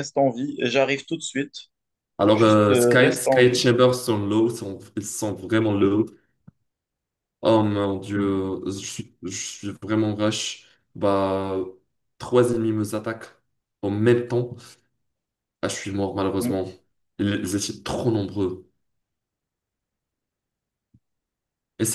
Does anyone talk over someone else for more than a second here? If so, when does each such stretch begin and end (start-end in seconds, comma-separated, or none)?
2.3-3.6